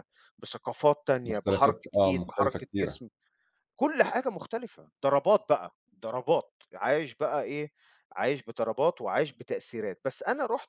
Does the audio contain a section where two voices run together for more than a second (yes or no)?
yes